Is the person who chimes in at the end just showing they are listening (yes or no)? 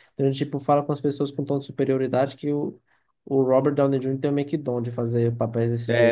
no